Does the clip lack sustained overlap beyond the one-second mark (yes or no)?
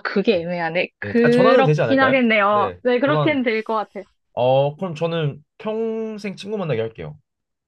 no